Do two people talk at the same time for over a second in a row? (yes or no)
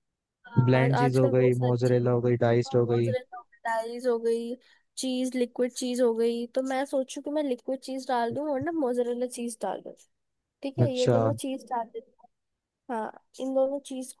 yes